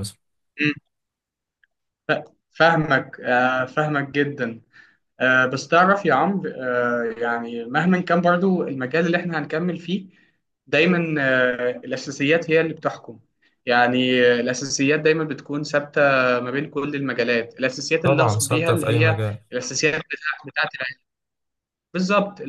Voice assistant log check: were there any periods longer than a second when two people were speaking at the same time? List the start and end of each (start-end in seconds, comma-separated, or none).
18.0-19.4